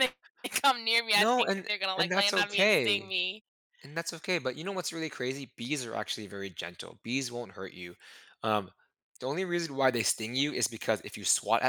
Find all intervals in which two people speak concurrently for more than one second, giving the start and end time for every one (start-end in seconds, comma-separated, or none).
1.2-3.1